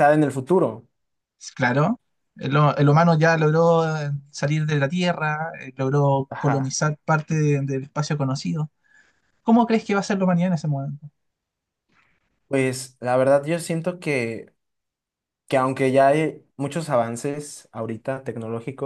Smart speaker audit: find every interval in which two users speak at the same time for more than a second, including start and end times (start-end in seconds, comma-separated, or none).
none